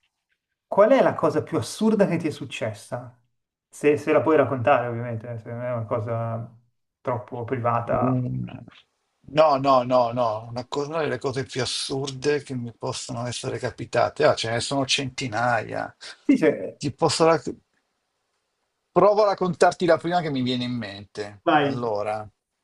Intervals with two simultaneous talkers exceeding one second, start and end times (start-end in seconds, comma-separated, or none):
none